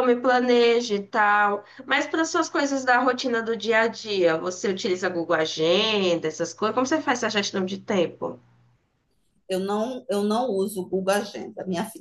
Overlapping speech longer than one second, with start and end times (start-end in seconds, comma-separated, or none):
none